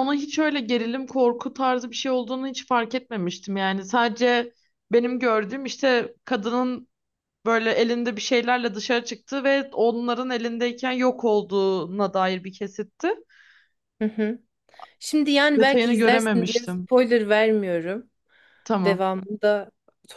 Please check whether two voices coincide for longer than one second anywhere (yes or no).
yes